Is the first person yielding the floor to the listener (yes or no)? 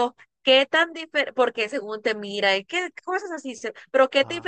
no